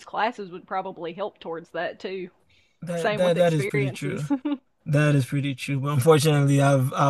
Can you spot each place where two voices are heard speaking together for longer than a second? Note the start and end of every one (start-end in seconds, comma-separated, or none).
3.0-4.3